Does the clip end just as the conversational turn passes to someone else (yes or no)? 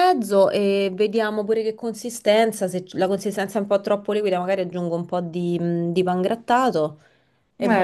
no